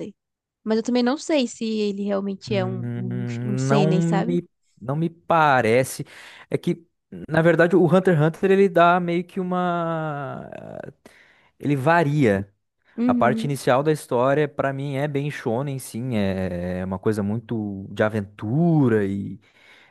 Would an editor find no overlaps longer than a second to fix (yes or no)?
no